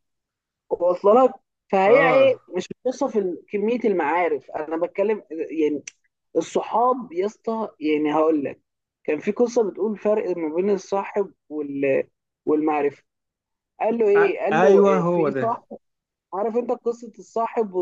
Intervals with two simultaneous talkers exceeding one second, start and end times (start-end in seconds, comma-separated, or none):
14.2-15.6